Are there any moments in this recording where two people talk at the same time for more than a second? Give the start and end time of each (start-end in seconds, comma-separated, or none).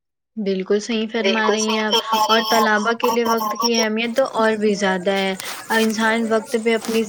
1.3-3.7